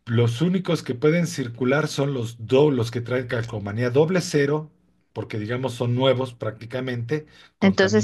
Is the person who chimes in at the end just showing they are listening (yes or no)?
no